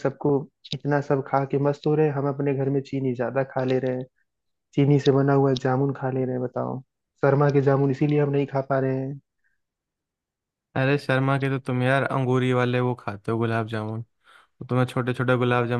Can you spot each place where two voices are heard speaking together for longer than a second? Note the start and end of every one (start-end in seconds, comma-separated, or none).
none